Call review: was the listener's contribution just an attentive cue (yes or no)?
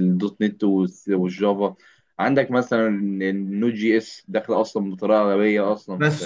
no